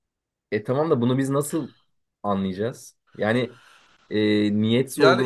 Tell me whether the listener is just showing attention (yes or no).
no